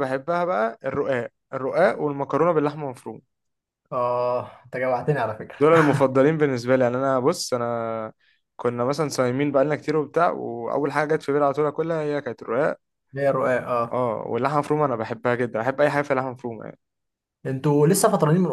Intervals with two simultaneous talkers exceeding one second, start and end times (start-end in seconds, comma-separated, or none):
none